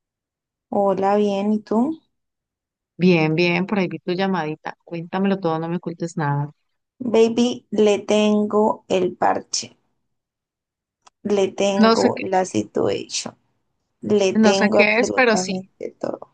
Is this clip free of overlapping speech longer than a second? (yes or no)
no